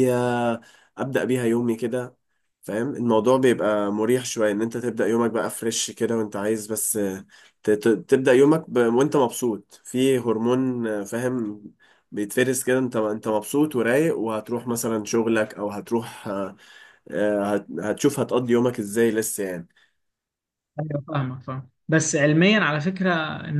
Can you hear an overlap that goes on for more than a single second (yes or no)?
no